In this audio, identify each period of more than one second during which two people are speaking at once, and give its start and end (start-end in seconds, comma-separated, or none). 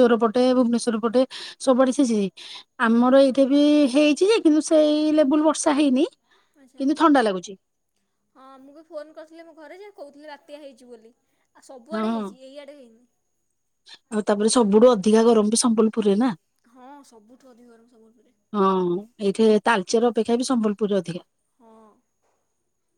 none